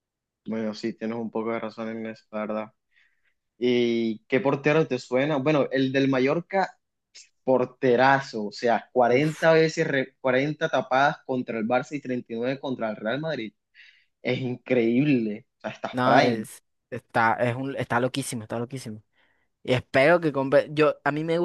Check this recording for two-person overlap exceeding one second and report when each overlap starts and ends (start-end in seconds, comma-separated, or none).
none